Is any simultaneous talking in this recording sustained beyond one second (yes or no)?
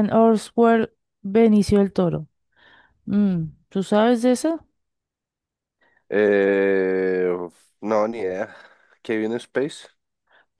no